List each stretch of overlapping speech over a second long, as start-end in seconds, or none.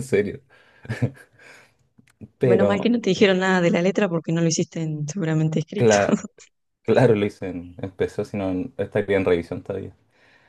none